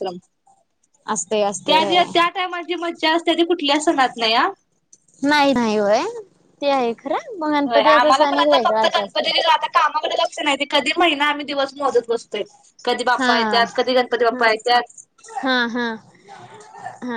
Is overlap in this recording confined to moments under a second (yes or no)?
no